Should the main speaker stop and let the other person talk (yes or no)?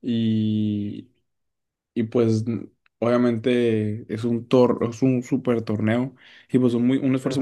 no